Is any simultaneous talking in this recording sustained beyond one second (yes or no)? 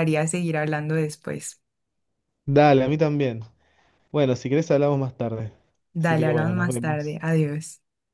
yes